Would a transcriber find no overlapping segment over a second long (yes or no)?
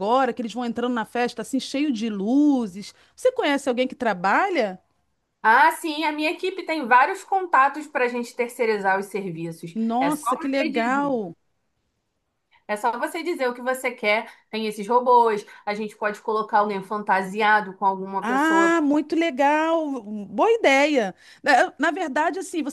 no